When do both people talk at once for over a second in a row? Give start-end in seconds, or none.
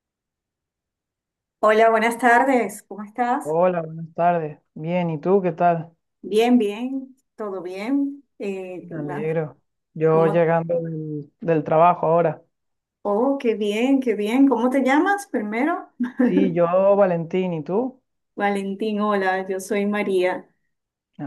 none